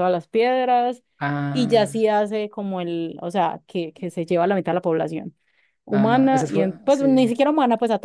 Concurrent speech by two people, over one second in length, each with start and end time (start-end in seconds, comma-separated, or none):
5.9-7.2